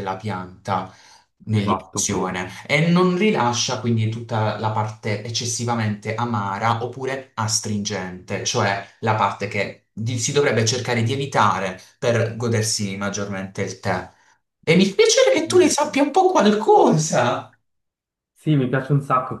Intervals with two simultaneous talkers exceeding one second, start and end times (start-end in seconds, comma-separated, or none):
none